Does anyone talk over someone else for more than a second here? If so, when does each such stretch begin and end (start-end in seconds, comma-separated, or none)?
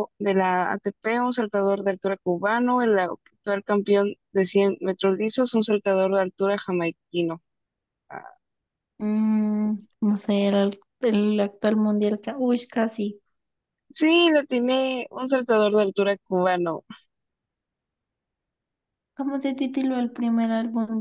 none